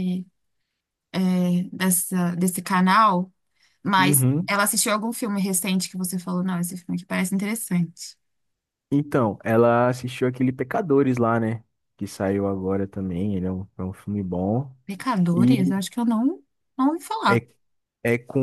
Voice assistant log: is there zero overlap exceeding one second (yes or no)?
yes